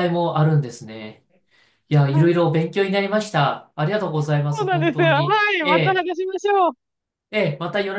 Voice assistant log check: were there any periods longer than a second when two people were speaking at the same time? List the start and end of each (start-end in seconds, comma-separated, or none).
4.5-6.1